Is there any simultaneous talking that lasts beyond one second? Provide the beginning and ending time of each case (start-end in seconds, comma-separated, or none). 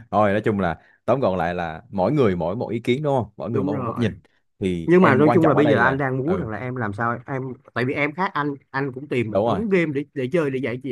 4.8-6.5